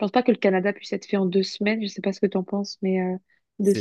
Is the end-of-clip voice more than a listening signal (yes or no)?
yes